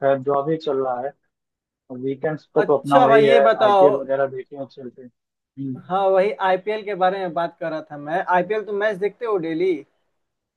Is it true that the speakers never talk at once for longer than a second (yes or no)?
no